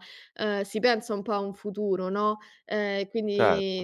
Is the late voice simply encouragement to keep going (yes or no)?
yes